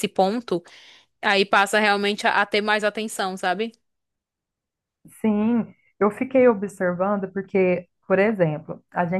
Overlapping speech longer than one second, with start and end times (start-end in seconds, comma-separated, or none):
none